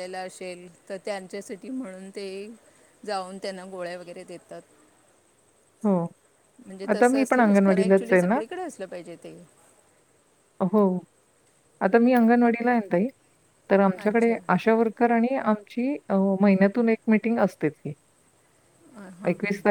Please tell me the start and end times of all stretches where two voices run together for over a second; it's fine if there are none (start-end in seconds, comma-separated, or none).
6.9-8.4